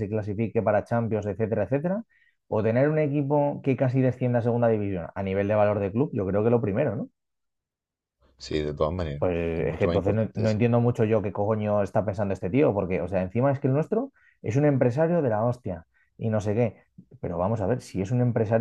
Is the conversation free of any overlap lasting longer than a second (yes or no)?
no